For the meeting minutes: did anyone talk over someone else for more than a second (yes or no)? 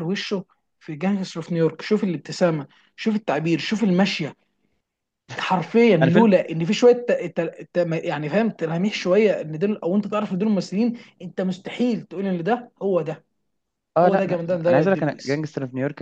yes